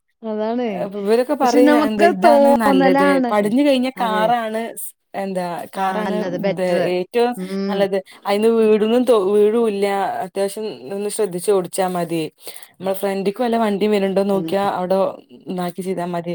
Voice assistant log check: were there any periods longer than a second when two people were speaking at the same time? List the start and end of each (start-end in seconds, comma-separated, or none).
1.4-3.3